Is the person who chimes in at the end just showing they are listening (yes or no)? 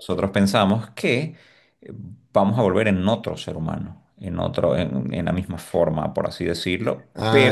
no